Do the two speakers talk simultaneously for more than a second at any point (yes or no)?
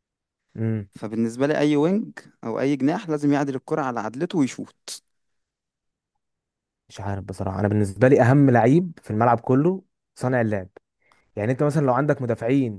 no